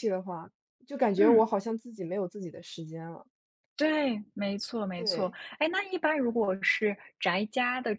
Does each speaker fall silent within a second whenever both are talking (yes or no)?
yes